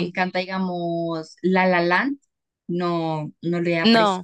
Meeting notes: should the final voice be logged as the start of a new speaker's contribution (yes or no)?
no